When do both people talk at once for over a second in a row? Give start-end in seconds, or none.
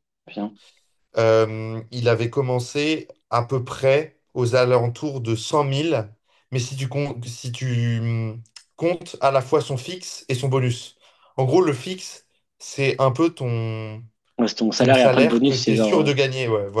14.8-16.1